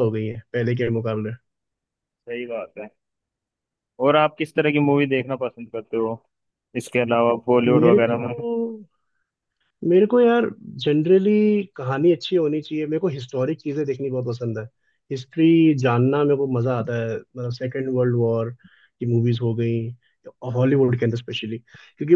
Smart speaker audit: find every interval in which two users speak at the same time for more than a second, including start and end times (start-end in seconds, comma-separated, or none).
none